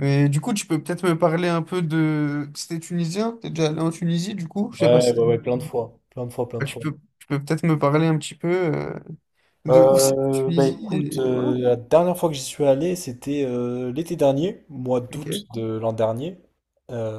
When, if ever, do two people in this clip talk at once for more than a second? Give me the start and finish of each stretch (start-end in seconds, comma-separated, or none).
9.7-11.5